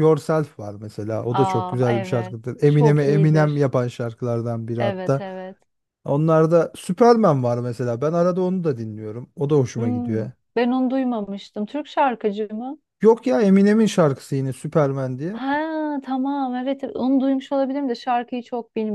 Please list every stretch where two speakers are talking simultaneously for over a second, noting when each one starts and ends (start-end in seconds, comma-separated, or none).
1.3-3.6